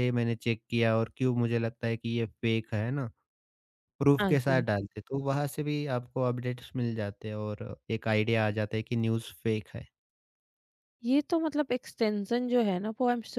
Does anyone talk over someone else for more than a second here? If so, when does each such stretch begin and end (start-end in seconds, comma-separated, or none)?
none